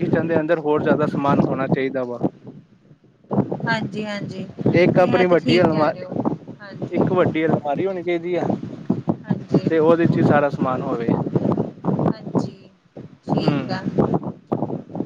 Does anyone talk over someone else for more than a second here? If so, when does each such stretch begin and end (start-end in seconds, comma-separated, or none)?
4.8-6.0